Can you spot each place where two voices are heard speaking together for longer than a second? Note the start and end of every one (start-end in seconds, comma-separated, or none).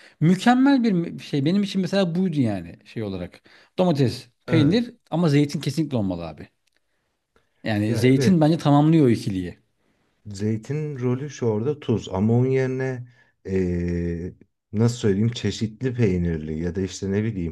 none